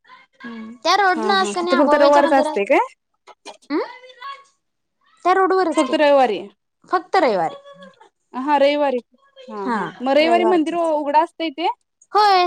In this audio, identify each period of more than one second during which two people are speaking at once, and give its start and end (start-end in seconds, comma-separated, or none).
1.1-2.6